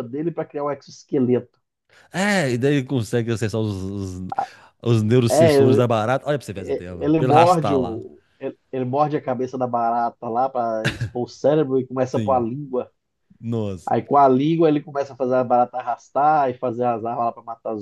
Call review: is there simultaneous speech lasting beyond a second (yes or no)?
yes